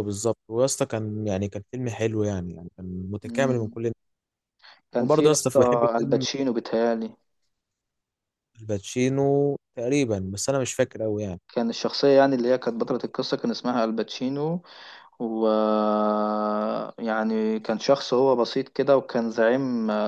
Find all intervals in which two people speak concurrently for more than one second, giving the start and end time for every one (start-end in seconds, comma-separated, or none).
5.0-6.3